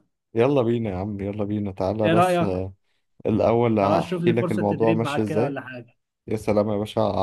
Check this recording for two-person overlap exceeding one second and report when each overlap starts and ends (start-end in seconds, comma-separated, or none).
3.8-5.6